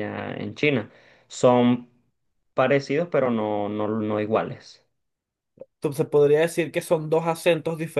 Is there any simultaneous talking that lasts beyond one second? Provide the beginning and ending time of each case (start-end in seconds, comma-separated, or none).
none